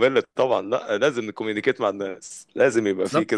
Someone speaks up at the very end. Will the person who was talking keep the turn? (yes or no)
no